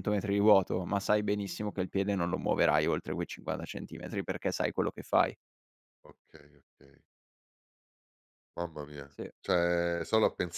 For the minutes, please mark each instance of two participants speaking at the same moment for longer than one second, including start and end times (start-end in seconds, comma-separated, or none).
none